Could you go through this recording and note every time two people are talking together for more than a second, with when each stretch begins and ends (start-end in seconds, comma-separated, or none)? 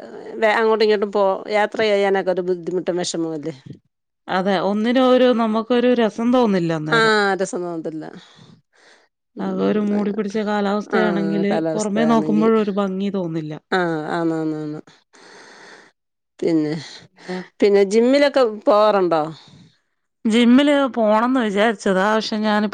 11.0-12.5